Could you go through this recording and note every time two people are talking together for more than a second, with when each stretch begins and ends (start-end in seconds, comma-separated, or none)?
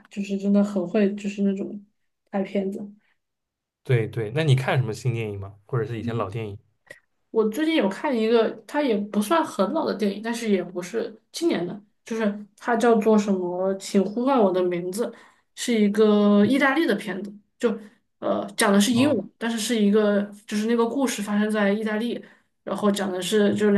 none